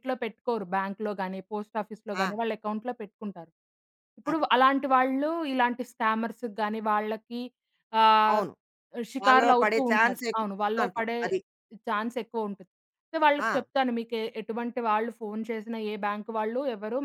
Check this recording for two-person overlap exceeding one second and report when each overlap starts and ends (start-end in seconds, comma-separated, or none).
9.2-11.2